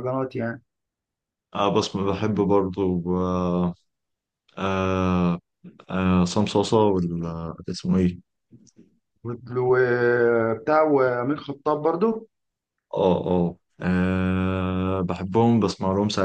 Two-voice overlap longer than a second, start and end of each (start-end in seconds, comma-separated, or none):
none